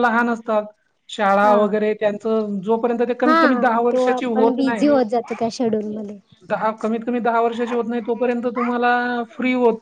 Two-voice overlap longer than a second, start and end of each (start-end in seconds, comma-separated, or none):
3.2-4.9